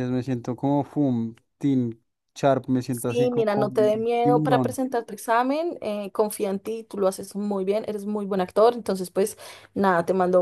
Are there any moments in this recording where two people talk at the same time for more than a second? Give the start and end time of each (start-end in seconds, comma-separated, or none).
2.9-4.8